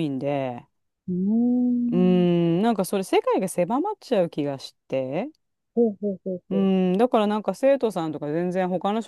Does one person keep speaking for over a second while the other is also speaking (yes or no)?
no